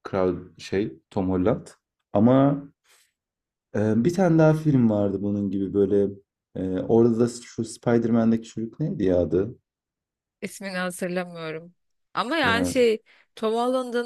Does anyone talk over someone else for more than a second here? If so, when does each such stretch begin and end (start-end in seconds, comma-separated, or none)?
none